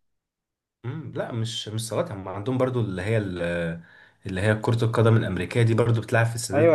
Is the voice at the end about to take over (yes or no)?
no